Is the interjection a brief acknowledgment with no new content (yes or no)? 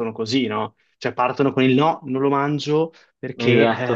yes